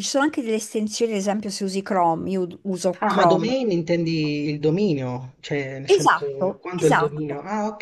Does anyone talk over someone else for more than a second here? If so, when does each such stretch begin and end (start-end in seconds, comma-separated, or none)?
5.9-7.2